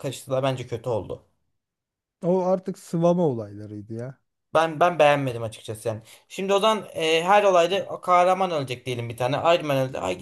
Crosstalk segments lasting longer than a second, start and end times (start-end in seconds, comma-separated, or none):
none